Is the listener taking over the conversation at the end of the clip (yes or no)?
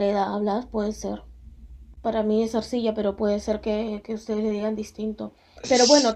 no